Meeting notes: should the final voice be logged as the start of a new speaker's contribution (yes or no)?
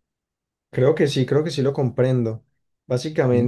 no